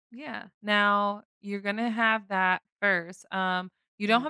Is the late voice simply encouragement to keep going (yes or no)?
yes